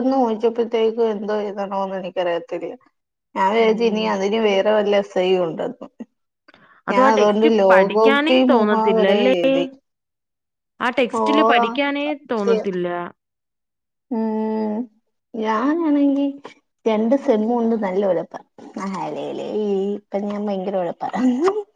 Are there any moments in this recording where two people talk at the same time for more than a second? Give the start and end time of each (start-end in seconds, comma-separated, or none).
6.9-9.3